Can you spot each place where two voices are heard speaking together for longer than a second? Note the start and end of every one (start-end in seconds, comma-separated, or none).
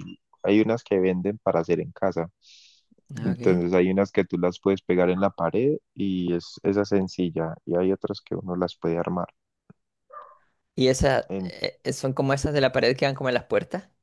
none